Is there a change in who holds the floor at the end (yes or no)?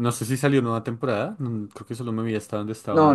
yes